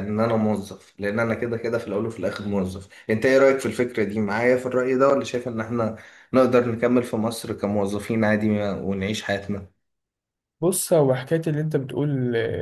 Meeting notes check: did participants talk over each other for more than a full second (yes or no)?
no